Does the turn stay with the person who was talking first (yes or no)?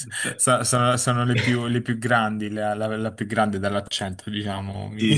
no